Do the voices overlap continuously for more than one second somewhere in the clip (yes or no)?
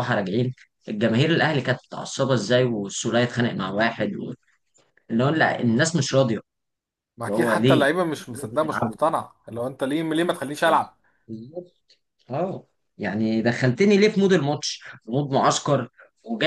yes